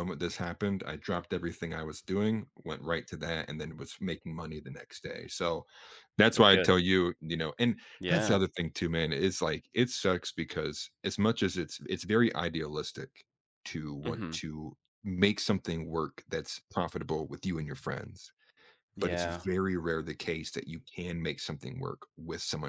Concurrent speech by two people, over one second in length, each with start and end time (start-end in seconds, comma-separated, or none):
none